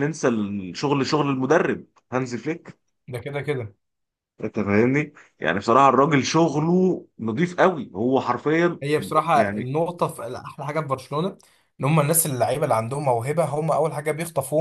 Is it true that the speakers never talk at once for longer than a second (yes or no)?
yes